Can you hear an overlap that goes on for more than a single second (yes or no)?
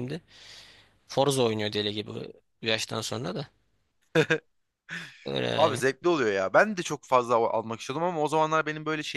no